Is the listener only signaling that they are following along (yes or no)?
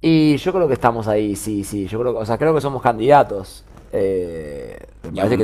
yes